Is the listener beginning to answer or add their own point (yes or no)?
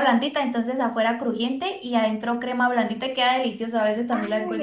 yes